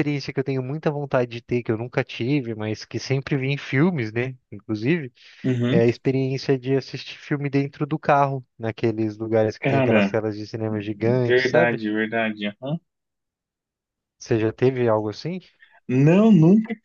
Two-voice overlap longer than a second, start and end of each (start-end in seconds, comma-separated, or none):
none